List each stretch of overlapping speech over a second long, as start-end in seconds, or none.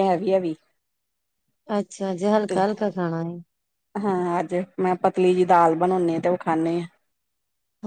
none